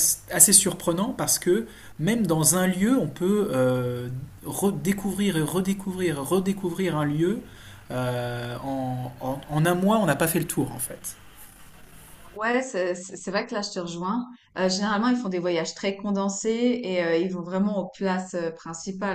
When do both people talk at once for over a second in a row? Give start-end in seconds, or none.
none